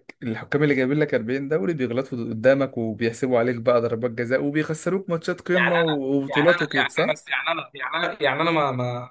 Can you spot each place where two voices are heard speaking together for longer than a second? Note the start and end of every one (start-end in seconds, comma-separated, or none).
5.5-7.2